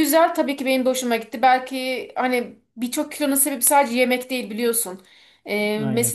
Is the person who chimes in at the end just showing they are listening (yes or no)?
yes